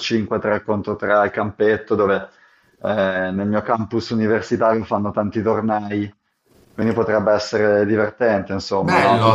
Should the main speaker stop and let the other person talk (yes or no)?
yes